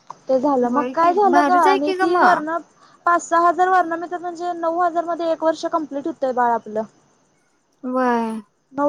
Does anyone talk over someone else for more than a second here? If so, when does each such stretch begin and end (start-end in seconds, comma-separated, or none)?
0.7-2.5